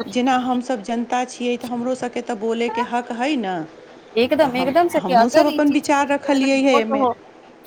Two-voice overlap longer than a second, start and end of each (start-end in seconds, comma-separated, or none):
4.4-7.1